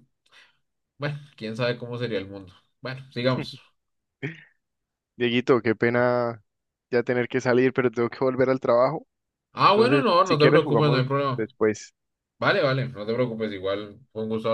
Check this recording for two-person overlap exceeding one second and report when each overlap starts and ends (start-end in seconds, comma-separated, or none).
9.7-11.5